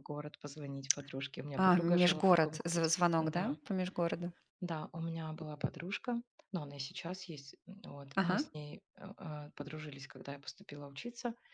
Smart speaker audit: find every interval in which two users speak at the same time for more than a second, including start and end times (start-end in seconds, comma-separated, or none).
1.6-3.6